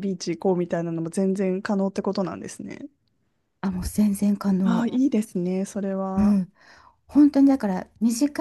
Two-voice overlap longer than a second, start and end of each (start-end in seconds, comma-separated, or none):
none